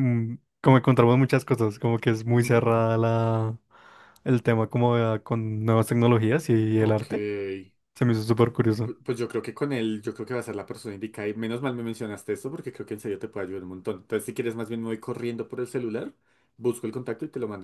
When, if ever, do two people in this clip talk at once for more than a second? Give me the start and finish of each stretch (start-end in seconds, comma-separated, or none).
none